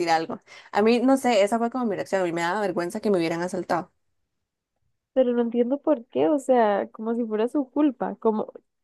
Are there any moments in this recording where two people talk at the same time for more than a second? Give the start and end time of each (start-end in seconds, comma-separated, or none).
none